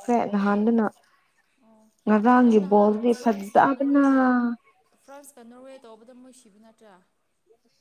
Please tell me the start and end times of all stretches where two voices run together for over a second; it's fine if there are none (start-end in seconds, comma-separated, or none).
2.4-4.0